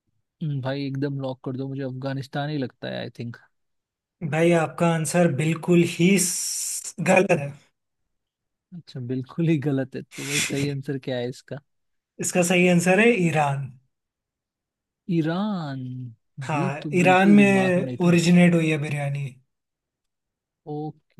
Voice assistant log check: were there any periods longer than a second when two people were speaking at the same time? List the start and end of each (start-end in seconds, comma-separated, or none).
16.5-18.2